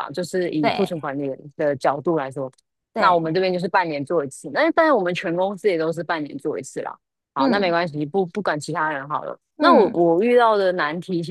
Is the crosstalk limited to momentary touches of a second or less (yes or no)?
yes